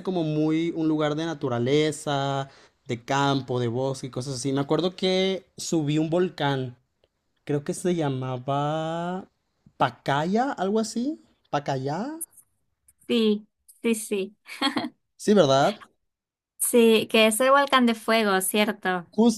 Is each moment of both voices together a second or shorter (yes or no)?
yes